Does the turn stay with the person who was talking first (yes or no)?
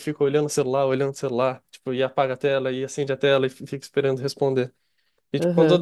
yes